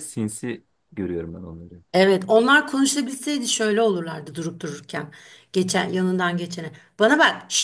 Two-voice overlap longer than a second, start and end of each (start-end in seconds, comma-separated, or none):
none